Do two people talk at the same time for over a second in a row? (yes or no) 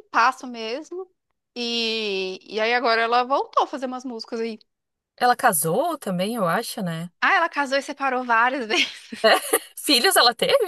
no